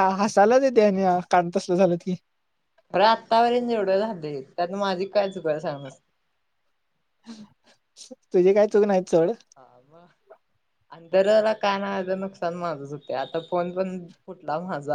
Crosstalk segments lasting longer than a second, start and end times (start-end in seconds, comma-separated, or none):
none